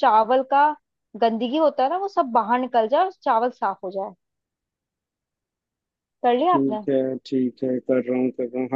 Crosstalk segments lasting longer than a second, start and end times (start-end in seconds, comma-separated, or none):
none